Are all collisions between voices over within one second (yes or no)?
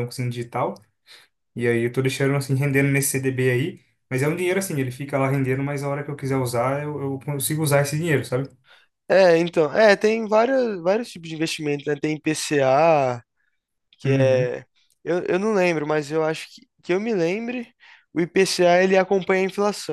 yes